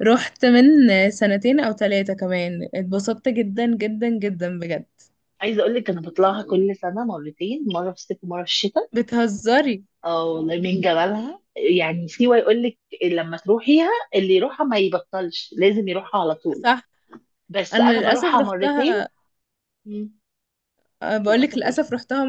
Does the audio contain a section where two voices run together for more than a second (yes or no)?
yes